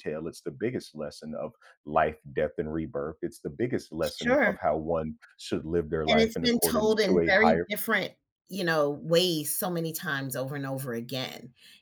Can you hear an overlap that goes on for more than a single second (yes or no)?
yes